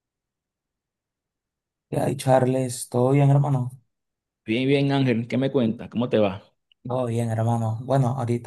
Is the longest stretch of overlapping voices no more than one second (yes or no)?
yes